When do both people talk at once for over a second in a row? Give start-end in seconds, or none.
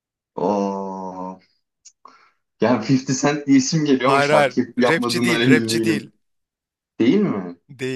4.0-6.1